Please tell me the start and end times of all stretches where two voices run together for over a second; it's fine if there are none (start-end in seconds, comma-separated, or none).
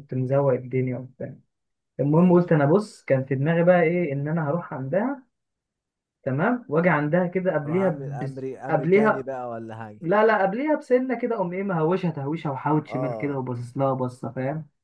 7.7-9.3